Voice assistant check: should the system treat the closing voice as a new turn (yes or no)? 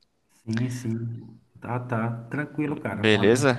yes